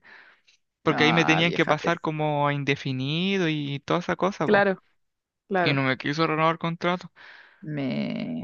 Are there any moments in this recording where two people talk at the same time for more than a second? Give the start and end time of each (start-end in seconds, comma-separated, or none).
0.9-2.1